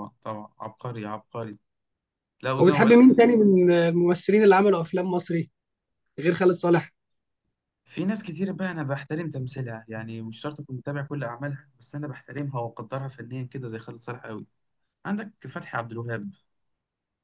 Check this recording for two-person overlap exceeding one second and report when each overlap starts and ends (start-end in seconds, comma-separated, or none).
none